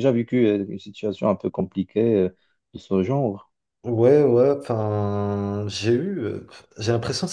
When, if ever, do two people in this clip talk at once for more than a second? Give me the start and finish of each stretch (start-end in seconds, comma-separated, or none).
none